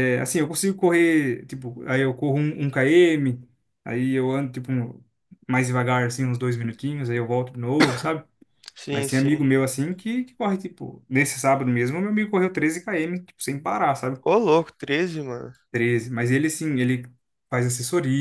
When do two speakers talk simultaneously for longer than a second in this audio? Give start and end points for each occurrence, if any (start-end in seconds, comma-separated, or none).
none